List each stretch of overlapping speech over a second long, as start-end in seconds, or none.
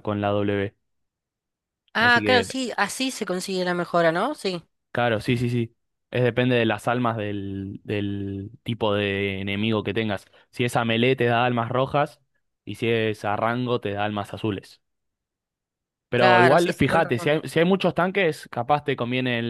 16.1-17.3